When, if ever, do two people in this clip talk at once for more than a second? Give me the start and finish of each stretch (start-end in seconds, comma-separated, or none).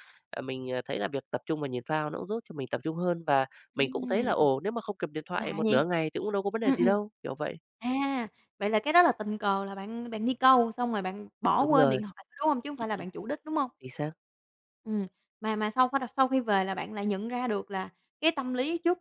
none